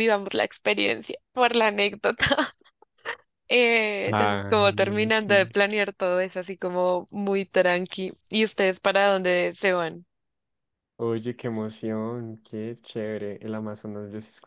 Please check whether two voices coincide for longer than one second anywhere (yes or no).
yes